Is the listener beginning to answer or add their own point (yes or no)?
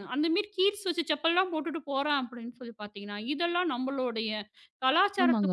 yes